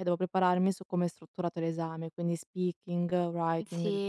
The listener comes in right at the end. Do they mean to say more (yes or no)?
yes